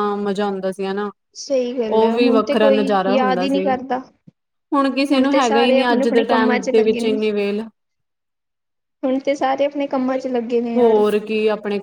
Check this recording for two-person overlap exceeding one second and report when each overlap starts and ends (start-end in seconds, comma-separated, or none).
1.9-3.6, 5.3-7.2